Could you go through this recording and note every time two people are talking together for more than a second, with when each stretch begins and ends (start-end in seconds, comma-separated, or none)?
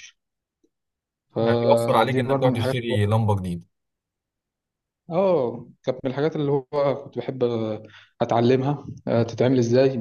1.4-2.8